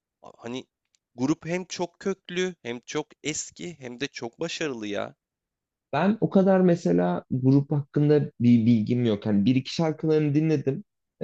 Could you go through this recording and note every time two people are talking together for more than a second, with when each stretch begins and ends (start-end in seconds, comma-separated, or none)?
none